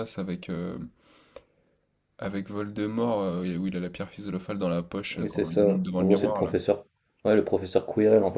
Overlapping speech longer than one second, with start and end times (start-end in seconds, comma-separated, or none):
5.2-6.5